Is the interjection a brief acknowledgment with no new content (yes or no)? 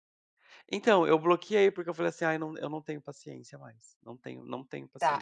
no